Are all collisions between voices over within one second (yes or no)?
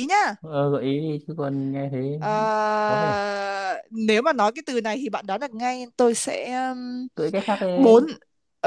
yes